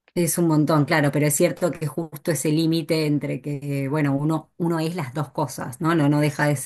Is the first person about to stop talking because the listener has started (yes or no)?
no